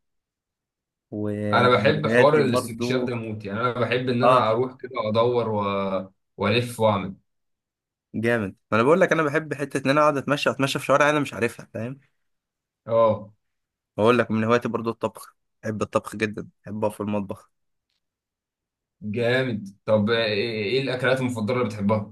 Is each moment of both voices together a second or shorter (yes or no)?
no